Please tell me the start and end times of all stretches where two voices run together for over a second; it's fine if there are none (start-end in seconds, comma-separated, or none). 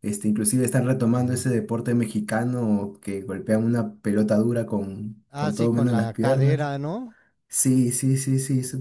5.3-6.7